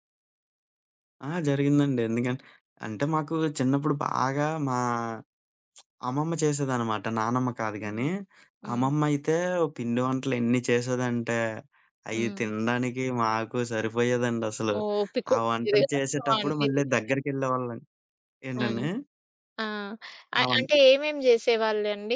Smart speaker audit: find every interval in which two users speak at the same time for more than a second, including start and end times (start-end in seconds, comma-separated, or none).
15.3-17.2